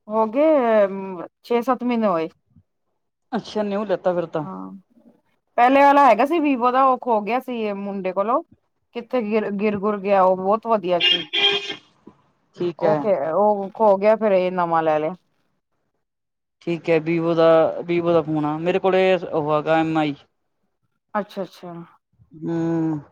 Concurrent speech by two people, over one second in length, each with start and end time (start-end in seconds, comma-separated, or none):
none